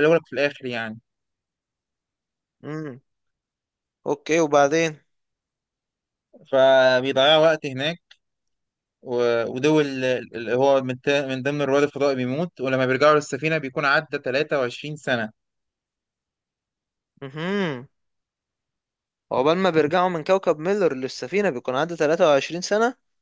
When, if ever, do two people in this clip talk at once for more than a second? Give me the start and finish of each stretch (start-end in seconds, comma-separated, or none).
none